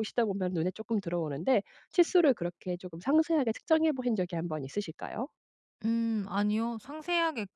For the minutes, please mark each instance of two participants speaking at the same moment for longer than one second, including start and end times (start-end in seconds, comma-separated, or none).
none